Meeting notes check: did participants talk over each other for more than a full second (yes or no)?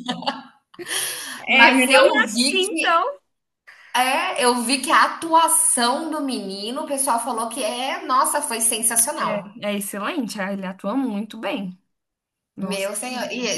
yes